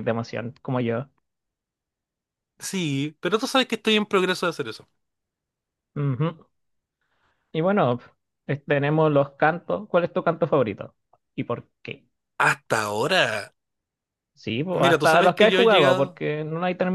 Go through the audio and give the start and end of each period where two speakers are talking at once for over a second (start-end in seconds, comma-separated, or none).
14.7-16.2